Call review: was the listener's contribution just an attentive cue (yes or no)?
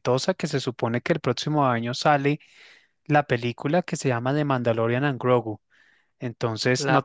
yes